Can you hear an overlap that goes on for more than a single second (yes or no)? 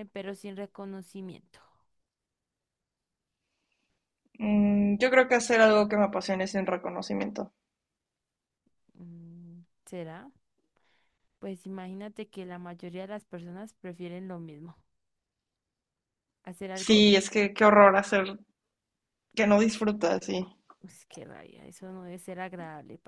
no